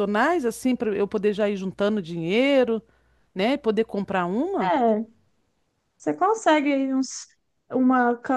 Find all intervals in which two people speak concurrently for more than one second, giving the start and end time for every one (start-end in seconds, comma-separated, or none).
none